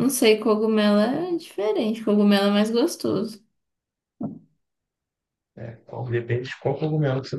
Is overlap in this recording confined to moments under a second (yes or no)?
yes